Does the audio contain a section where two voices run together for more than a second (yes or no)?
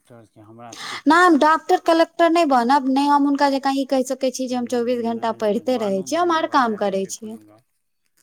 yes